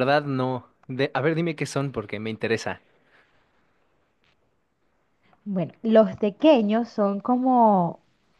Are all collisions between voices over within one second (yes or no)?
yes